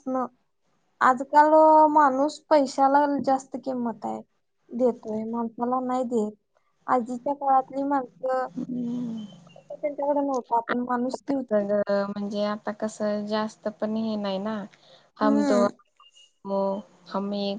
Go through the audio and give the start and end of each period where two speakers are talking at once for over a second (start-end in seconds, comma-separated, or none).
none